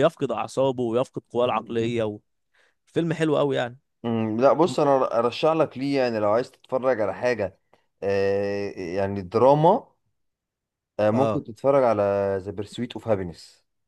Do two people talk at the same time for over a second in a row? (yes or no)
no